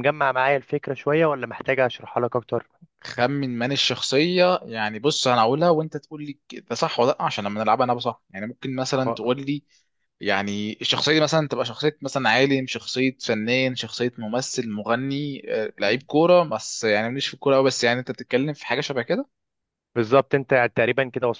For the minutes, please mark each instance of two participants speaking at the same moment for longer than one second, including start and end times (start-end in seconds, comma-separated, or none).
none